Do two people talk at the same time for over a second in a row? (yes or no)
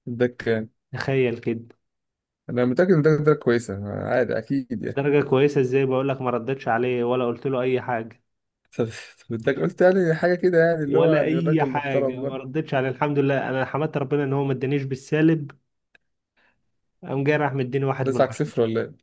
yes